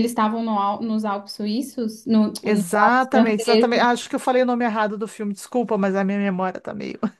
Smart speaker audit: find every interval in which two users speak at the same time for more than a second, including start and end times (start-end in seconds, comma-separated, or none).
2.4-3.9